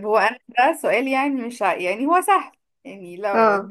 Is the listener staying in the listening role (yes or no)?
yes